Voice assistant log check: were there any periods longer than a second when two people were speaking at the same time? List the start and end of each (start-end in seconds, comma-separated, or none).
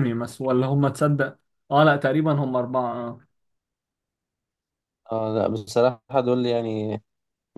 none